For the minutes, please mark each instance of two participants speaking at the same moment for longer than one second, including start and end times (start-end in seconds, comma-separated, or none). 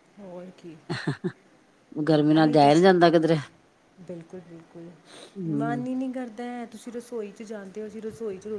none